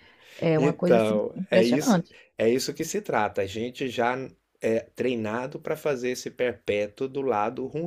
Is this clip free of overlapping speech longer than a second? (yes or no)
no